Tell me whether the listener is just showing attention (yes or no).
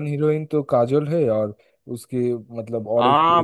no